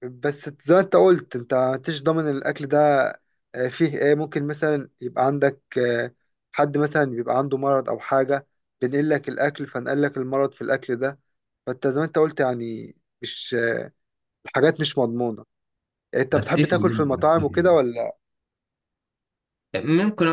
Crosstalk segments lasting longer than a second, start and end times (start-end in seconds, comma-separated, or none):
16.3-17.8